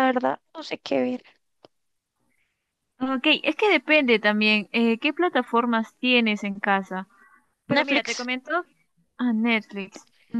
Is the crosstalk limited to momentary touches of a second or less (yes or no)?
yes